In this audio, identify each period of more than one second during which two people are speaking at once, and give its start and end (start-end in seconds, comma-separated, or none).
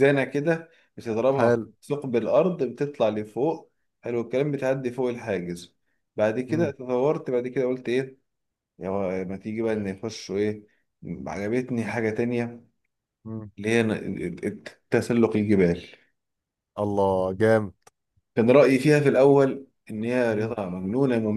none